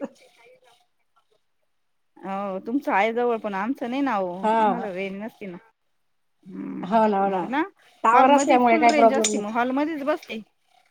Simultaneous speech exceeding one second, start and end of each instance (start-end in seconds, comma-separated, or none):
8.1-9.6